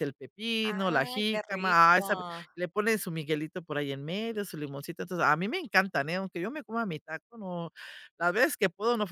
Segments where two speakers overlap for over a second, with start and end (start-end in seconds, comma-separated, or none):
0.7-2.5